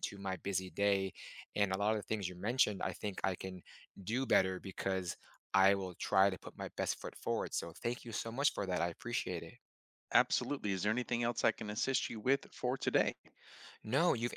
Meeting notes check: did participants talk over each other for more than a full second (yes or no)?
no